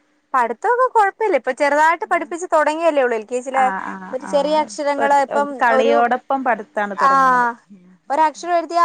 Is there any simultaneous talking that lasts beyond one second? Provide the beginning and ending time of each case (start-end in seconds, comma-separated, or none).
4.3-5.9